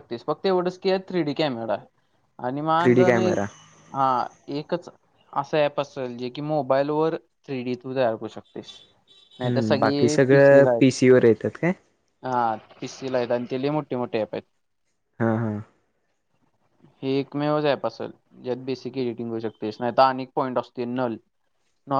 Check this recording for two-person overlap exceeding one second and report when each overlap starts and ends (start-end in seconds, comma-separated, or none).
9.4-10.7